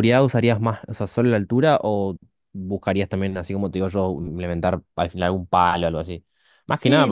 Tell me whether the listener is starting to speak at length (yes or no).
yes